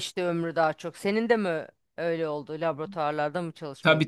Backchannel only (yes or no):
no